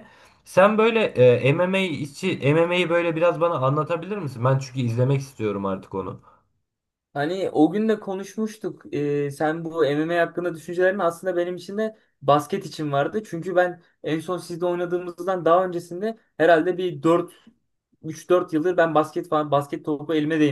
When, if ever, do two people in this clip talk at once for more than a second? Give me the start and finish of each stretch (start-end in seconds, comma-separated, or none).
none